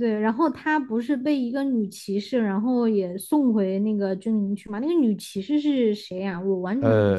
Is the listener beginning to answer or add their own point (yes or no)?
yes